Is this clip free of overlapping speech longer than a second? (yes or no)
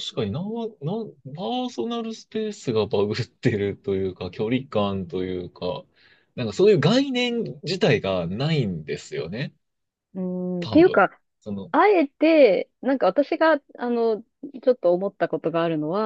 yes